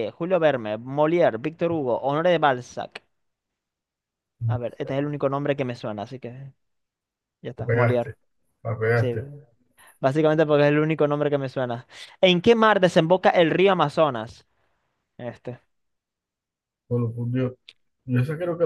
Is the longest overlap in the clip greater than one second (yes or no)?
no